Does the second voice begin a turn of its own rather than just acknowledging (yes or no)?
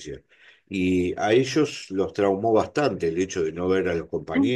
no